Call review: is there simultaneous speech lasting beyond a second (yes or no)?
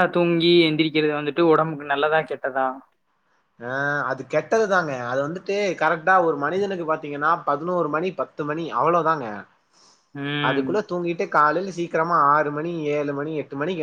no